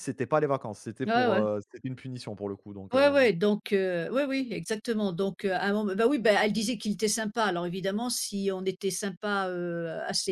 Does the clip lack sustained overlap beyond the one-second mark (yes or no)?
yes